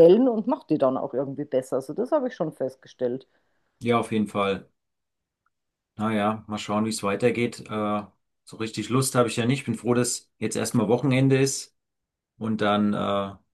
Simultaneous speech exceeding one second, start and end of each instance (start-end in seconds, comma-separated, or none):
none